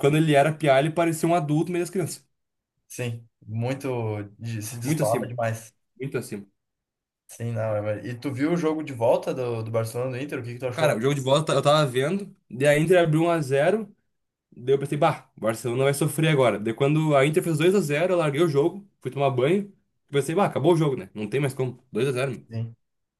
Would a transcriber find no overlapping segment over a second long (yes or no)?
yes